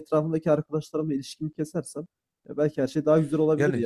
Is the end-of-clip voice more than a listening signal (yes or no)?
yes